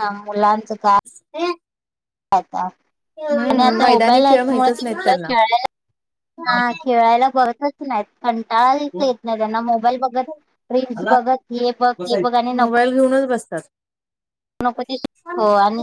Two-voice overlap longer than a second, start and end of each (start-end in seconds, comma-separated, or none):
3.5-5.3